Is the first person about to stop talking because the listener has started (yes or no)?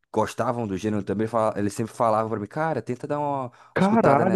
yes